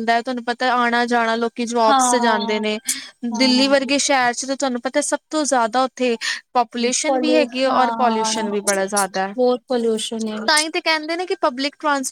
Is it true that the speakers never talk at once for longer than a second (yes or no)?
no